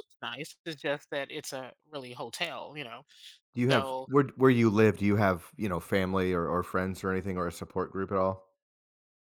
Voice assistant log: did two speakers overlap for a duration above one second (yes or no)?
no